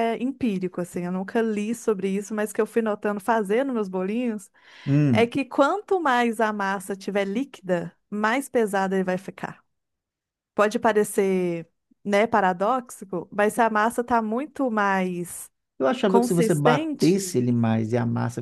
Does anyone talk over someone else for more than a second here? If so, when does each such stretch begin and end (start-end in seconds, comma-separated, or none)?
16.1-17.4